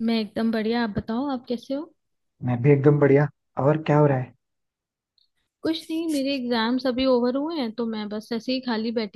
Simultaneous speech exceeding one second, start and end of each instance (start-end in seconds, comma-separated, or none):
none